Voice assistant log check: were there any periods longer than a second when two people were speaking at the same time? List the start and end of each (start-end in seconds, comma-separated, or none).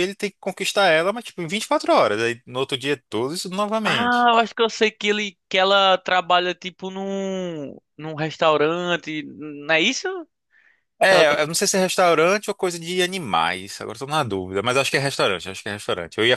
none